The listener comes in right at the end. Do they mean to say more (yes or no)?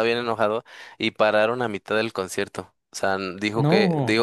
no